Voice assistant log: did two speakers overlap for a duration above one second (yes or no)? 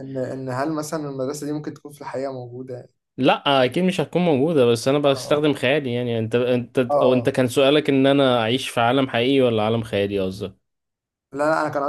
no